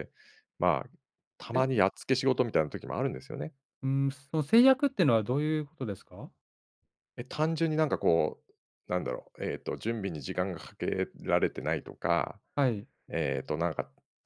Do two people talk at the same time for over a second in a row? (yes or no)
no